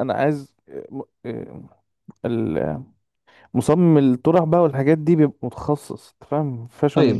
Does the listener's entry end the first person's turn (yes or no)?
yes